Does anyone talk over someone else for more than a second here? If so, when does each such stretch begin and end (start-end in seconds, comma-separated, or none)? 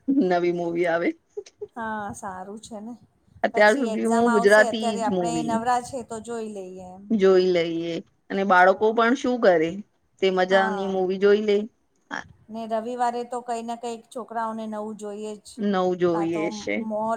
3.5-5.5